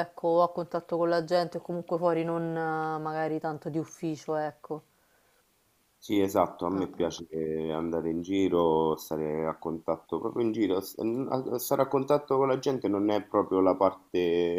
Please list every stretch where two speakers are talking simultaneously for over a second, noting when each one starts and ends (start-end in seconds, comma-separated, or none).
none